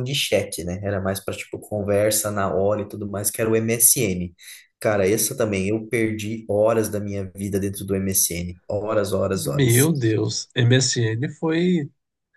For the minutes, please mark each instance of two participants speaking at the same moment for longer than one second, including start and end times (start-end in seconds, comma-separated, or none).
none